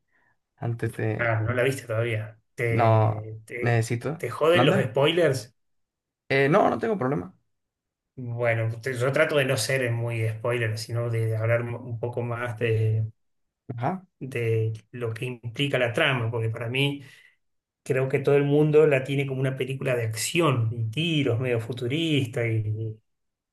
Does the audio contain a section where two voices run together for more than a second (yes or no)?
yes